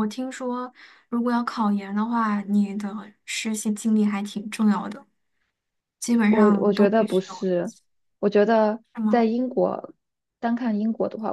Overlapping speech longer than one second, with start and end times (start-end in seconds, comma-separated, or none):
6.3-7.5